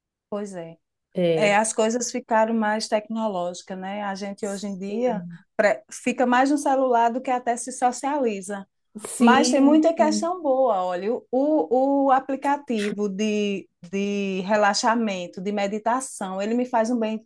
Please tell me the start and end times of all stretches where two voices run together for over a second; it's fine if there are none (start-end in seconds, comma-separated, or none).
9.2-10.4